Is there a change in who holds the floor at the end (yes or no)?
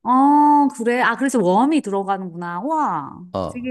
yes